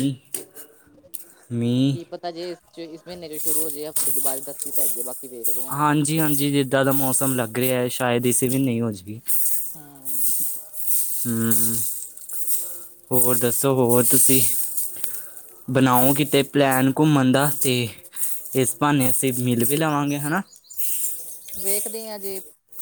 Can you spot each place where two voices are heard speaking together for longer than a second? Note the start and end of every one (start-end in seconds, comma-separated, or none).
none